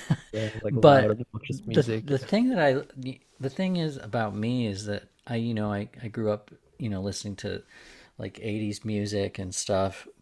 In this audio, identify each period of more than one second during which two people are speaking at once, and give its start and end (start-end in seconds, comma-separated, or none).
0.7-2.3